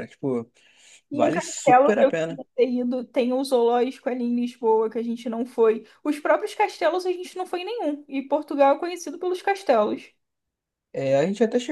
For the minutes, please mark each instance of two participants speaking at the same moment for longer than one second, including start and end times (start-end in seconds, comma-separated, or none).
1.1-2.4